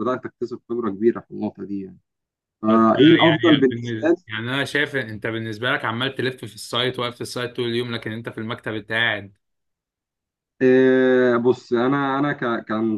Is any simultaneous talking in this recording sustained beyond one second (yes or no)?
yes